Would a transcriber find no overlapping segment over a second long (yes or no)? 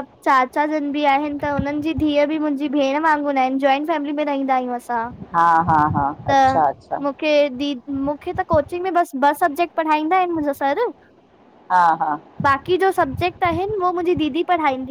yes